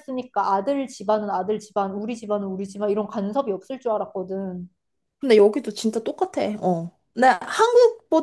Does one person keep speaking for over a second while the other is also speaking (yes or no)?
no